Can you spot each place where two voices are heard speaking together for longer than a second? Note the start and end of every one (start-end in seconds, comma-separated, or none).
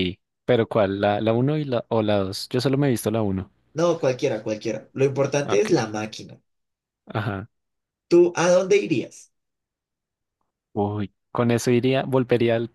none